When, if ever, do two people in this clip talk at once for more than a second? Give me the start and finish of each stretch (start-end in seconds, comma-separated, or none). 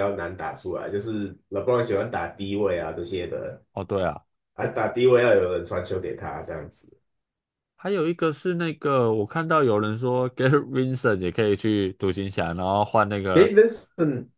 none